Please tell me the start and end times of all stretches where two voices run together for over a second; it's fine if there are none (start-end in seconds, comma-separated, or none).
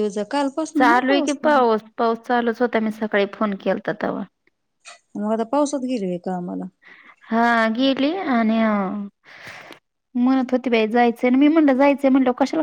none